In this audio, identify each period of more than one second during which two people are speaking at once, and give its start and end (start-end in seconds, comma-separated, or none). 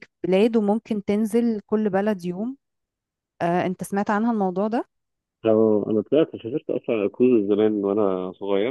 none